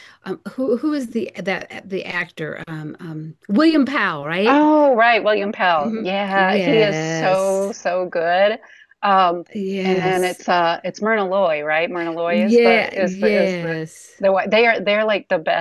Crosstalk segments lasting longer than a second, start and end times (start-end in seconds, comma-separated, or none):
5.8-7.7, 12.2-13.7